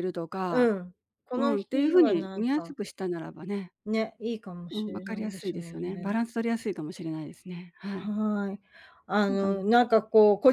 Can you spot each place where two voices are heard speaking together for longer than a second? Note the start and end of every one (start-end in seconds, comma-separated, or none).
1.3-2.8, 4.7-6.1